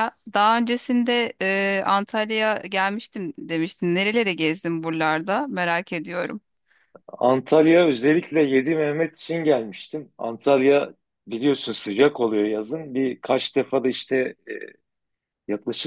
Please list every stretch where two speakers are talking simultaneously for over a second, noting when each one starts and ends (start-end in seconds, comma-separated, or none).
none